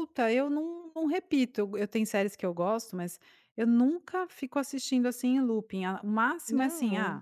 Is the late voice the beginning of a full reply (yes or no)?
no